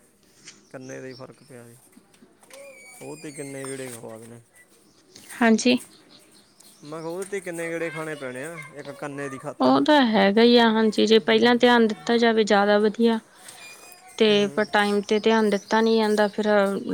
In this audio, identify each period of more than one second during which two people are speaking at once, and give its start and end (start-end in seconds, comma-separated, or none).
none